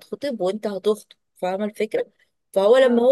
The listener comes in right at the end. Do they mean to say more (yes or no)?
no